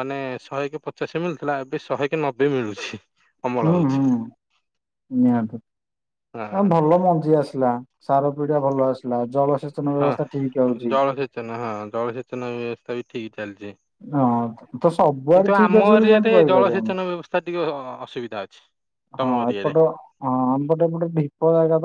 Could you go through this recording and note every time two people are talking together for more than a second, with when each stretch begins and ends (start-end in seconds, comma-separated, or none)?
15.3-16.9